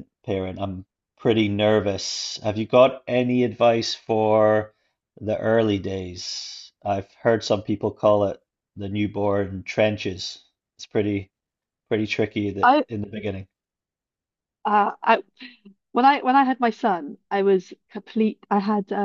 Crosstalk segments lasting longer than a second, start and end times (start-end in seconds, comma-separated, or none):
none